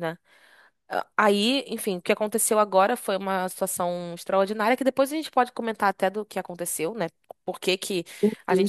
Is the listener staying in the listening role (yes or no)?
yes